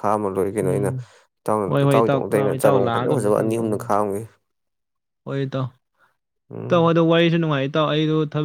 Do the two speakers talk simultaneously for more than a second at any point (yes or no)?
yes